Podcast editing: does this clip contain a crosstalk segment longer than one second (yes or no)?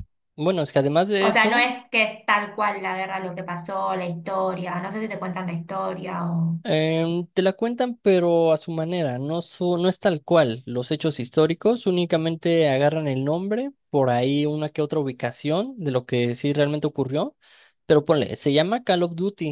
no